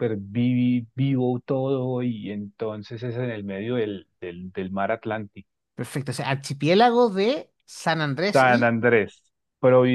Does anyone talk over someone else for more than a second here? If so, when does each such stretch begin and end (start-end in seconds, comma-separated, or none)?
none